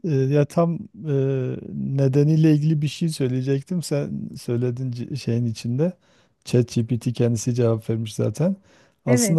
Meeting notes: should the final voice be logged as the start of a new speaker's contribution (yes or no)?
no